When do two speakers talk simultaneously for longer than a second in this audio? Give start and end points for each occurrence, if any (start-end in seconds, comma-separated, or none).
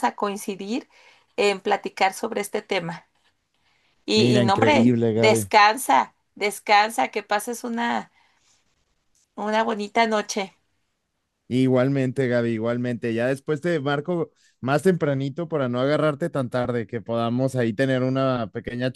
4.1-5.5